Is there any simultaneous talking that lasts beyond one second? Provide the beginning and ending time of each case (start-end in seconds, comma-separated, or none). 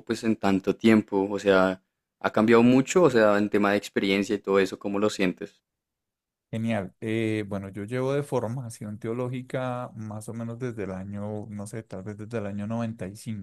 none